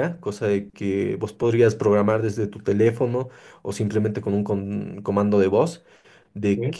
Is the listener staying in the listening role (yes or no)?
yes